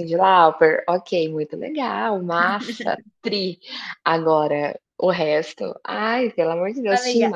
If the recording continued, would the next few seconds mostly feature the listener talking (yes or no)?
yes